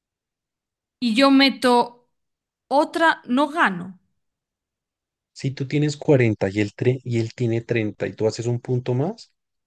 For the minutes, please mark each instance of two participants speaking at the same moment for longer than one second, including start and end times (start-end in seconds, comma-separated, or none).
none